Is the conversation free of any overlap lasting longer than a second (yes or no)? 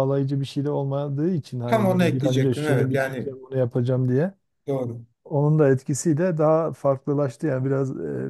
no